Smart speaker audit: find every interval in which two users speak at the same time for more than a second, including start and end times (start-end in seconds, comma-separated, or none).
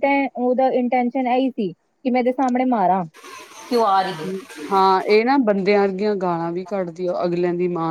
none